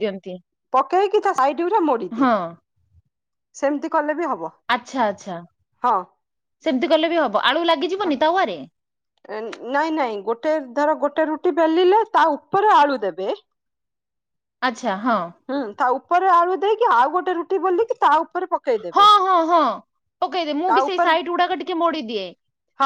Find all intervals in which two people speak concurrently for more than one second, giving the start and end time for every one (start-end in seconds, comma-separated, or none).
none